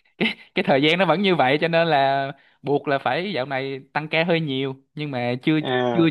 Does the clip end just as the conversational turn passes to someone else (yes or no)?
no